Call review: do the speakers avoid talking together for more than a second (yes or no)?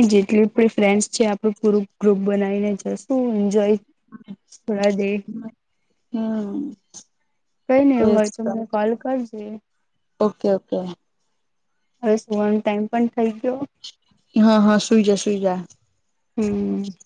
yes